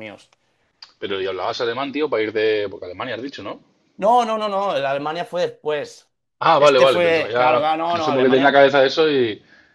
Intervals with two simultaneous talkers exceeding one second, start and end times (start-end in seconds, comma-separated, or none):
6.6-8.6